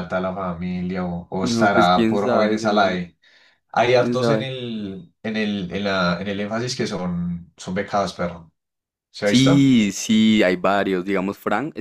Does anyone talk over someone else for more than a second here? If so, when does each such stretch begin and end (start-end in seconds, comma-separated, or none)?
1.4-3.0